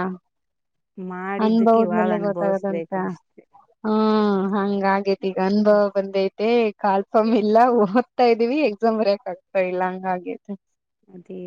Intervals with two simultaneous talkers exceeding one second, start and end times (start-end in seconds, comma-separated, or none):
1.4-2.9